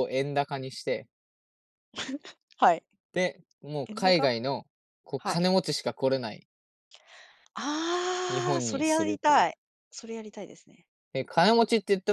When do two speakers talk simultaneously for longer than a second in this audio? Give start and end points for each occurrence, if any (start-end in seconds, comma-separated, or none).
8.3-9.5